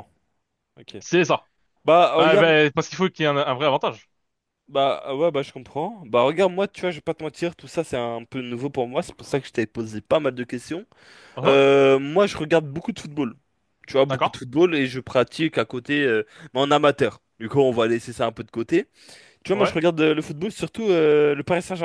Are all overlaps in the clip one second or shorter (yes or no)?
yes